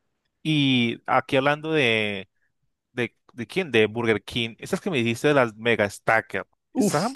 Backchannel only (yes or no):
yes